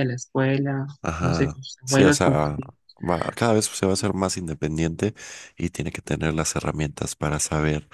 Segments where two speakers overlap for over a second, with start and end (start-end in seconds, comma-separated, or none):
1.0-2.6